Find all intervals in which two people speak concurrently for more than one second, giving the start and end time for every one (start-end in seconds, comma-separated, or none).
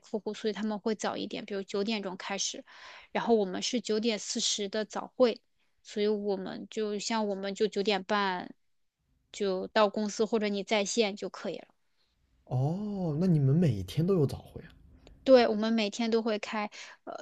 none